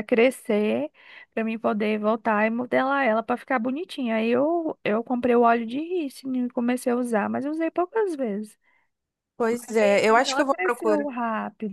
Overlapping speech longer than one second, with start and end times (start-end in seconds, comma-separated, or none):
9.5-11.1